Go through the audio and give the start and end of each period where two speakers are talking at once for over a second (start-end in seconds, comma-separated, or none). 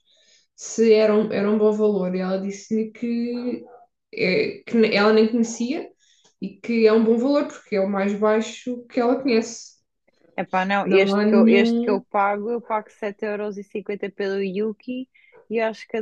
10.8-12.0